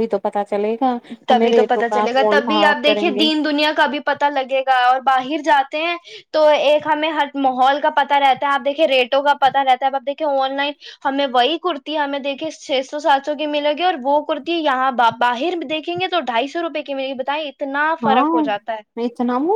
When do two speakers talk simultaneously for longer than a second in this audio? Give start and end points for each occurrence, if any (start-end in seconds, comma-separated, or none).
1.3-3.2